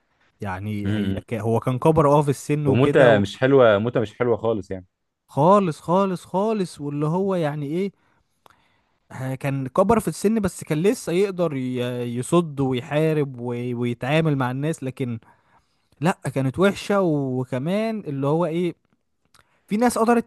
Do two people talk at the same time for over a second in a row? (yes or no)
no